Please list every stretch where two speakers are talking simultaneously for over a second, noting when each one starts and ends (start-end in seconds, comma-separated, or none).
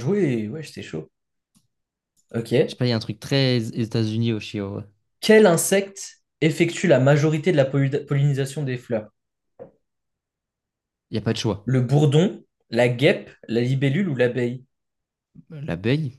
none